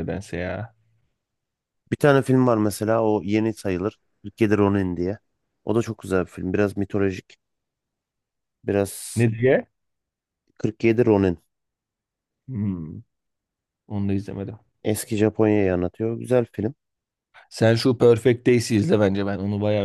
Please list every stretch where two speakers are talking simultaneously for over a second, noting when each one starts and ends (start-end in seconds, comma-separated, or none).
none